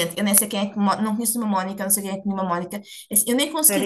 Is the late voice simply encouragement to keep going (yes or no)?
yes